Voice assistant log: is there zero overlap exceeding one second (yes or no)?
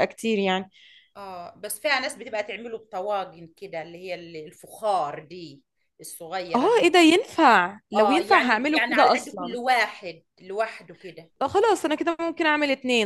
no